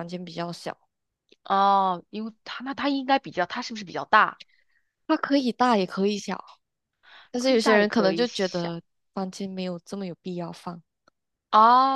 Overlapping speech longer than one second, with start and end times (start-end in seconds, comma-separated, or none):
7.4-8.7